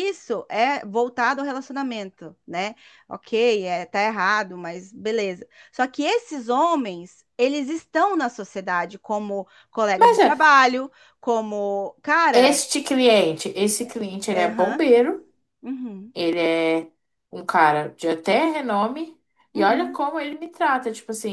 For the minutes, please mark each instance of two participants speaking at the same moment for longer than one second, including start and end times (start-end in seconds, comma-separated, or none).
none